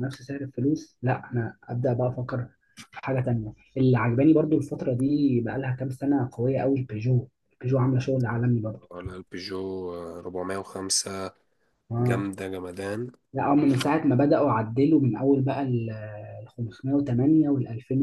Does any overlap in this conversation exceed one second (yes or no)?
no